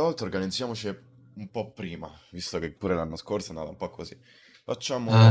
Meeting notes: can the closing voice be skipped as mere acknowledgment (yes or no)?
no